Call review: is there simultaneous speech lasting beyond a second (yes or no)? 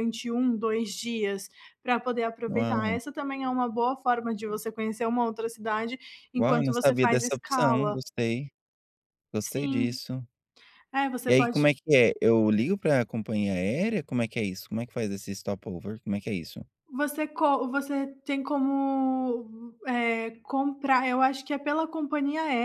yes